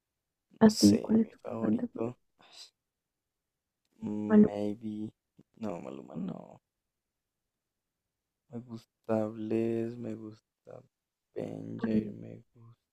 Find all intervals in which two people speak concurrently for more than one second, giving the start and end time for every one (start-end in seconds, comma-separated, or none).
0.6-2.2